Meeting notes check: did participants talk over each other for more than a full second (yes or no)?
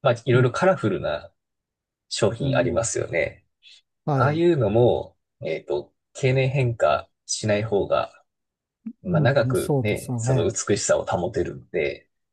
yes